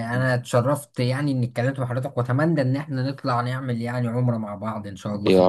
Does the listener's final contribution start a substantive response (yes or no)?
yes